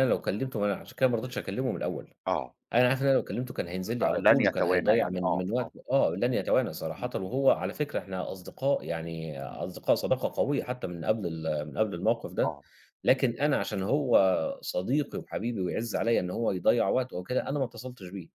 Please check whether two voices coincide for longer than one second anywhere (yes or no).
yes